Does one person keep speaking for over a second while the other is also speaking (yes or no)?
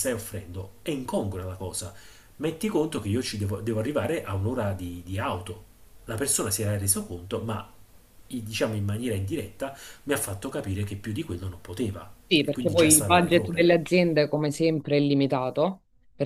yes